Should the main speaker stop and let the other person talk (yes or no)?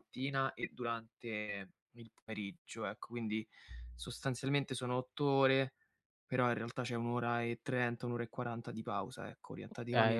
no